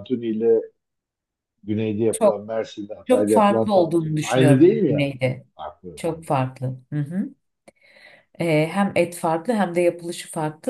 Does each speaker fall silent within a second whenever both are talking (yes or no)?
no